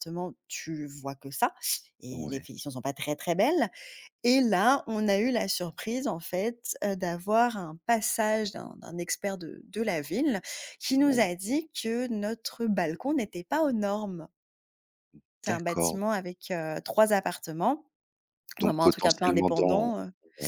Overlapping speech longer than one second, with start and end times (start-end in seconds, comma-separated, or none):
18.6-19.9